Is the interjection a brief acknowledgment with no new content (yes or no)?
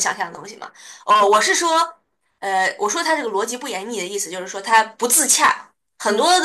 yes